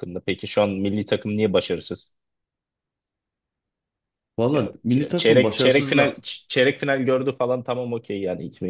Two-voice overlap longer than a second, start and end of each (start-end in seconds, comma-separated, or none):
4.5-6.2